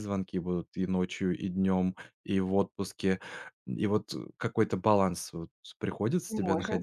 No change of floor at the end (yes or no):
no